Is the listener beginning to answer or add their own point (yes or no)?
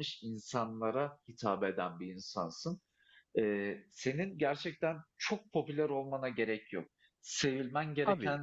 no